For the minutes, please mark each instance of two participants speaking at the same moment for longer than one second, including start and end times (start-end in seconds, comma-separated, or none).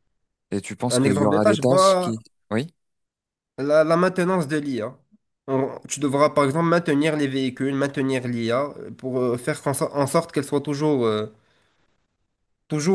0.9-2.1